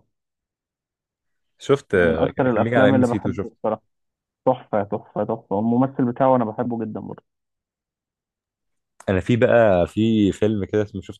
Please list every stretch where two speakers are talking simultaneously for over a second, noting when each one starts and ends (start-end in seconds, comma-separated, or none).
1.9-3.5